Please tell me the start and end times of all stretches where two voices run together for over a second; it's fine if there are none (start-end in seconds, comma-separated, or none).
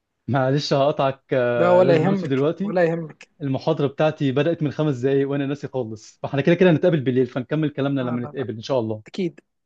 1.6-2.8